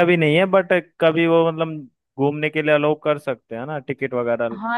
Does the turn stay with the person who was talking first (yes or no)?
no